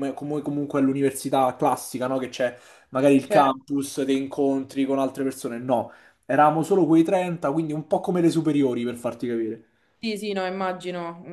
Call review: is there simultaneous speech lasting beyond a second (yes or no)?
no